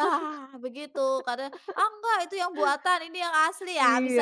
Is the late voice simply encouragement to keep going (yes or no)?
no